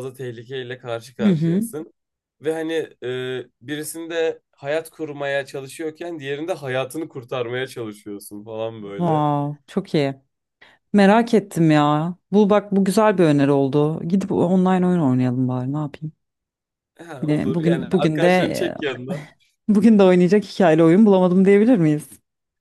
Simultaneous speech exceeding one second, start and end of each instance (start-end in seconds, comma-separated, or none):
17.2-18.8